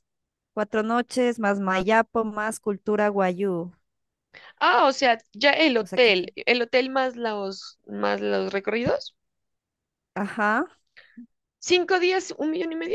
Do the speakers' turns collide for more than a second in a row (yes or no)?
no